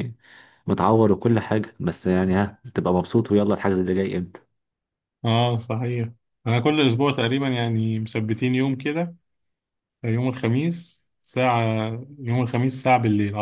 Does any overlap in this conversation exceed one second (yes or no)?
no